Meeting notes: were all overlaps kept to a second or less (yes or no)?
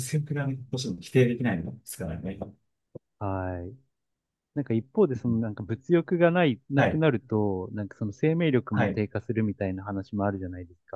yes